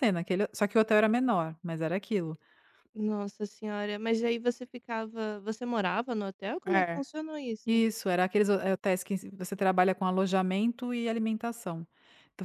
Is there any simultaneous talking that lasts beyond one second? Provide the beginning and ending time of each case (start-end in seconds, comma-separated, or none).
none